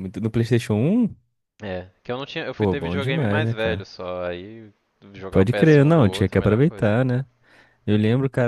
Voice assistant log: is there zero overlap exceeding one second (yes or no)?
no